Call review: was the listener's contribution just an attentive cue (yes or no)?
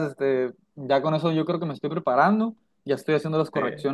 yes